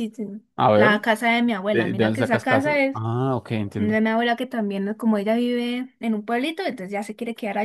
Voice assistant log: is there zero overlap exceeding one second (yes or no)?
no